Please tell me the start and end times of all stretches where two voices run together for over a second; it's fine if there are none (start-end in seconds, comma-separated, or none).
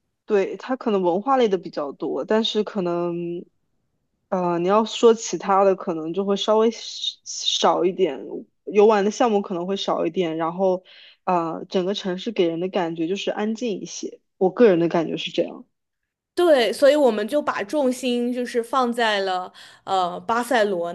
none